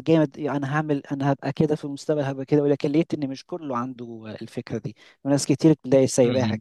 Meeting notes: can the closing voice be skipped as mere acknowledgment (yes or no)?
no